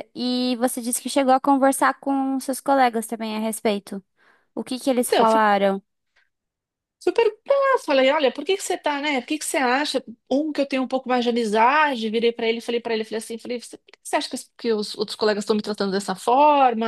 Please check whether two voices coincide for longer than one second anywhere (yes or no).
no